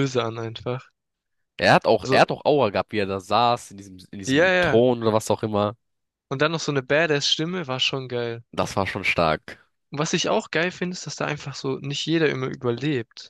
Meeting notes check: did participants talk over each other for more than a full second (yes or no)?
no